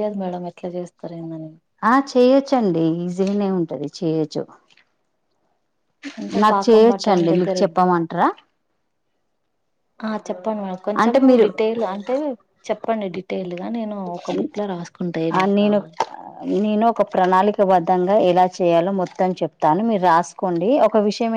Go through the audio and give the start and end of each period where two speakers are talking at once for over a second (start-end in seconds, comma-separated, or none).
6.4-8.0